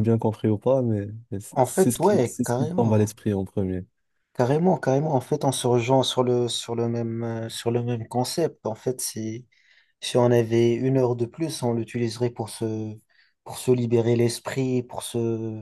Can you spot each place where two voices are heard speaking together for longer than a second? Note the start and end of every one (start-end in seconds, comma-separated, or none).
1.5-3.1